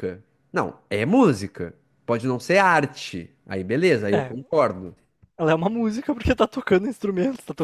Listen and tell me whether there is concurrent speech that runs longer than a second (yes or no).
no